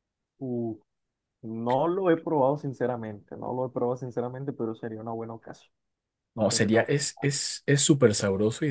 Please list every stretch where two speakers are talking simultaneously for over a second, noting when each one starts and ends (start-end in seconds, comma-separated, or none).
none